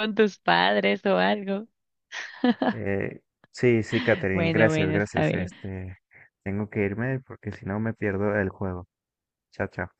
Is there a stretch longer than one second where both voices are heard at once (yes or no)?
yes